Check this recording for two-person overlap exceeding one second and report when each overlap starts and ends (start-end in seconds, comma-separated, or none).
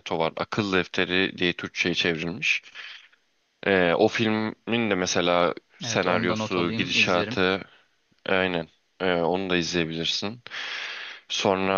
5.8-7.4